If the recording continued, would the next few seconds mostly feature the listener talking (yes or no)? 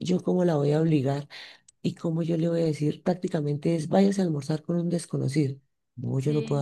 yes